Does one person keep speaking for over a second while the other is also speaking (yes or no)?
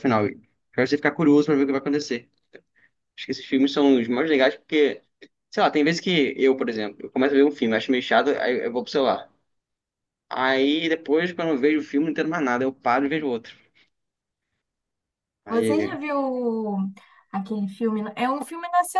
no